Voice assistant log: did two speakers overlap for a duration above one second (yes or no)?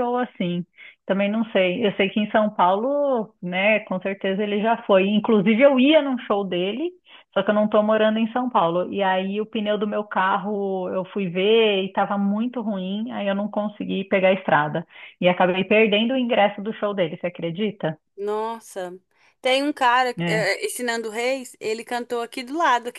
no